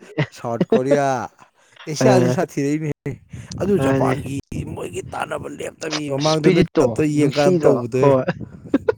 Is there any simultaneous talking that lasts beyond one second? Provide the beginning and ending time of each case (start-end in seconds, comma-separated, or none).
6.2-8.1